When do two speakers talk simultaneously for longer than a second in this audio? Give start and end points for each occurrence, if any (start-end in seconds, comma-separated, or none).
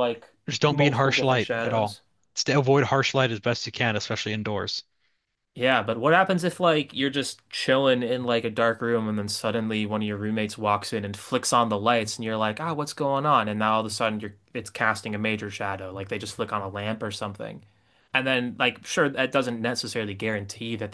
0.7-2.0